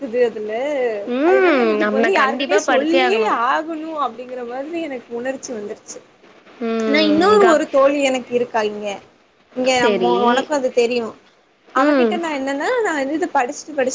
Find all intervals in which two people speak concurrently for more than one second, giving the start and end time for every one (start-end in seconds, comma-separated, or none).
1.3-3.3